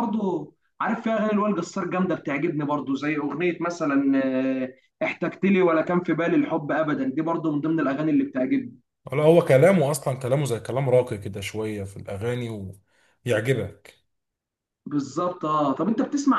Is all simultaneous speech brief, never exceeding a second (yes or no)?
yes